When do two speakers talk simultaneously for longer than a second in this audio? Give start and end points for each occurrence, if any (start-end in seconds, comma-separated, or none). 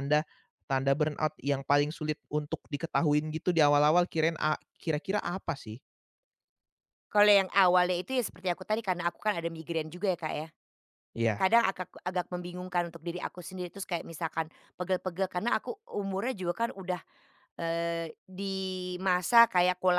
none